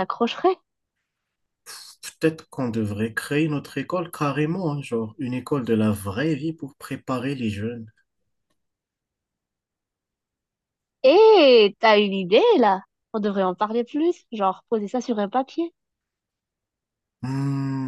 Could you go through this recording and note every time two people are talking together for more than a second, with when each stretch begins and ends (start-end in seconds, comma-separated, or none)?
none